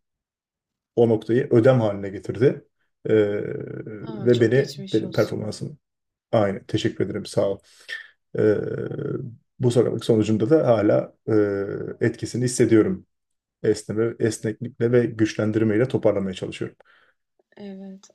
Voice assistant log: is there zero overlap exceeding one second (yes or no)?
no